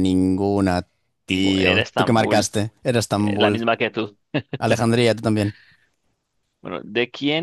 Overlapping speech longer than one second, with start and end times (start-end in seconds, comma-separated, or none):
1.3-2.5